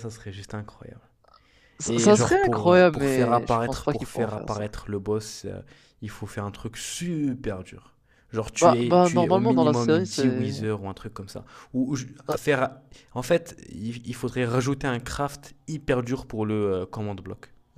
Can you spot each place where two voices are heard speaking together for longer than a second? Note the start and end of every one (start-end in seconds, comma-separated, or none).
1.9-4.6, 8.5-10.7